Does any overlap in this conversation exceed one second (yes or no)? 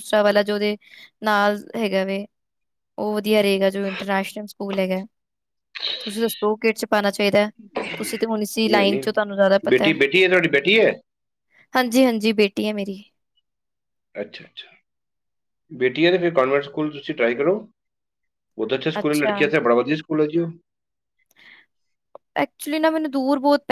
no